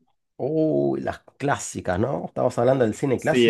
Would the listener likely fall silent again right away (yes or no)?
no